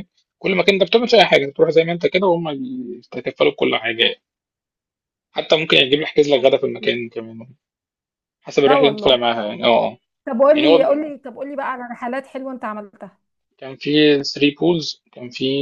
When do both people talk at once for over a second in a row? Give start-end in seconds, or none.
none